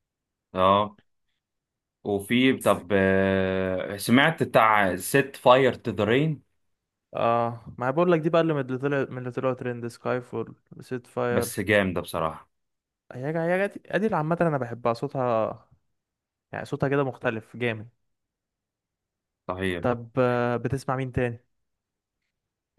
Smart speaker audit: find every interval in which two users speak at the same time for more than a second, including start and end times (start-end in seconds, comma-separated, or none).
none